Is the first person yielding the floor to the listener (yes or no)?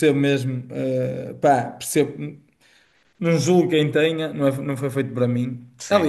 no